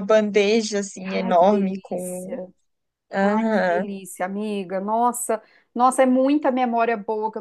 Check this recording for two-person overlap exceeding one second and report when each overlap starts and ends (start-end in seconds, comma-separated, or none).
1.0-2.4